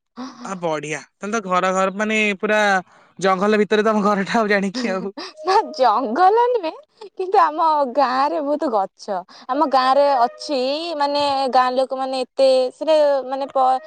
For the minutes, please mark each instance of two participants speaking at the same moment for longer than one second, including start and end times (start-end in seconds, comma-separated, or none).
none